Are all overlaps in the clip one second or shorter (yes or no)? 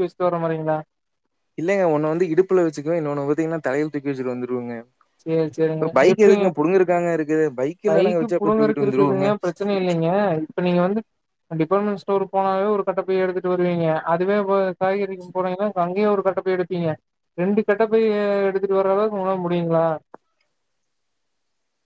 no